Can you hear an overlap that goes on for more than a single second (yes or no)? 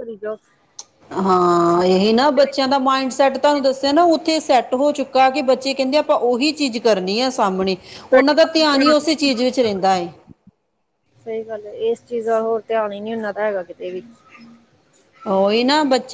no